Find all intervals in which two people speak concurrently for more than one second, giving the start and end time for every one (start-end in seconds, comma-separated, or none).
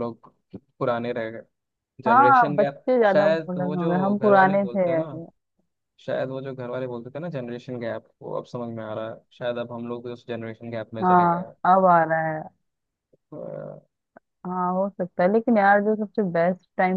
2.1-4.8